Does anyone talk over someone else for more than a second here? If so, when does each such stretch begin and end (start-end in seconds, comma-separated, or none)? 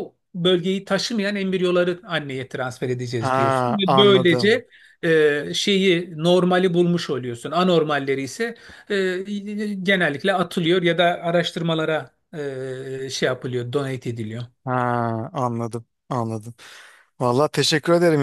3.2-4.6